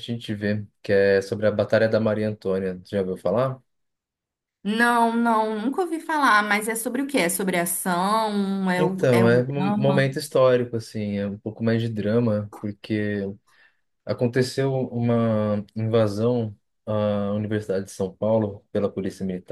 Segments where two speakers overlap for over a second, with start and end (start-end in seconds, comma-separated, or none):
8.7-10.1